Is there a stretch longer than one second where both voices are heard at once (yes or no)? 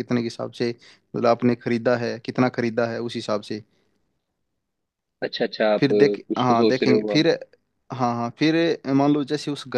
yes